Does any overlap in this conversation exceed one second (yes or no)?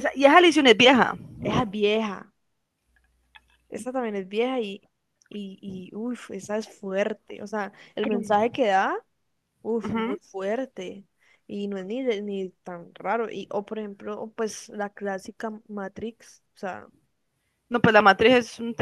no